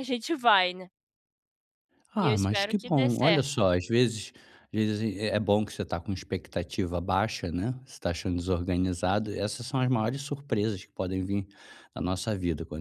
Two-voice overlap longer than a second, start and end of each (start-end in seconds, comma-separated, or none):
2.2-3.5